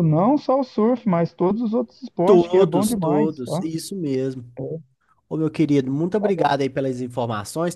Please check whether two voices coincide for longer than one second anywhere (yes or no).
yes